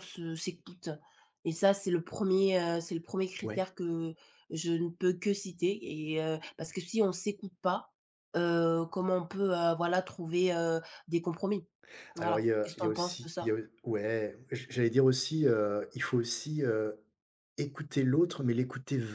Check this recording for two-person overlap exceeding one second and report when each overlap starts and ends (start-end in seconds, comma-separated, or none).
12.2-13.6